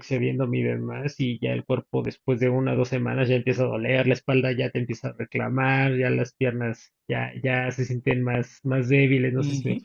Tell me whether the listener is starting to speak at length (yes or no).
yes